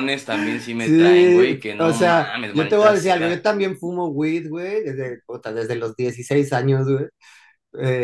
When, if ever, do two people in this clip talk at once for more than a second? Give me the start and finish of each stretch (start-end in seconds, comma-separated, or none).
0.8-3.5